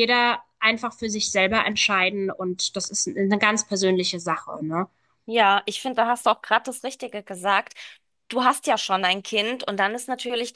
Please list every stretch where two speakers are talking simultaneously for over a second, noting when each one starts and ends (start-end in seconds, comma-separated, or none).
none